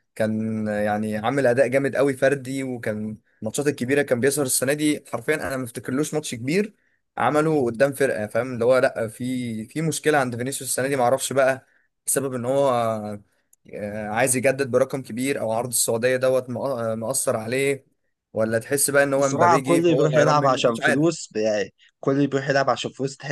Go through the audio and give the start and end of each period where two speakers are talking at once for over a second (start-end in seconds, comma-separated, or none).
19.0-21.2